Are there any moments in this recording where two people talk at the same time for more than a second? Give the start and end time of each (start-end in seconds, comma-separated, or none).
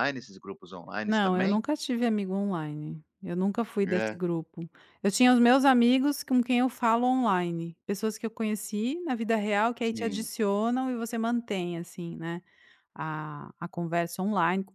none